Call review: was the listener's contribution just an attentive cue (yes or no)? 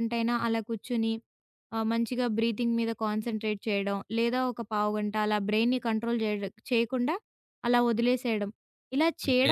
yes